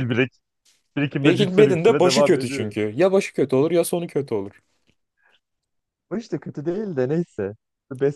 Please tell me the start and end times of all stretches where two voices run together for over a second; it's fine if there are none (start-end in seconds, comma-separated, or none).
1.2-2.8